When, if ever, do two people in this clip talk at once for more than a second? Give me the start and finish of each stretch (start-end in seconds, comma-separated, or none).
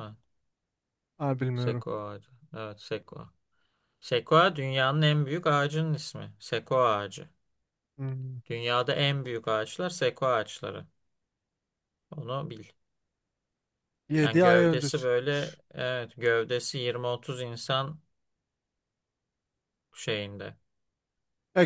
14.2-15.6